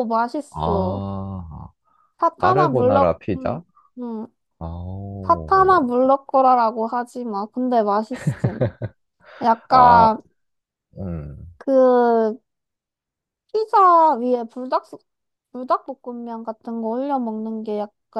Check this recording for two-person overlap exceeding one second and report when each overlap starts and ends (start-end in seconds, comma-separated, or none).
2.4-3.6